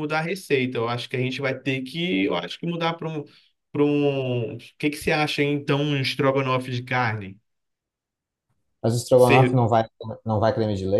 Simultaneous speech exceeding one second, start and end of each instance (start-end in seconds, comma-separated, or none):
none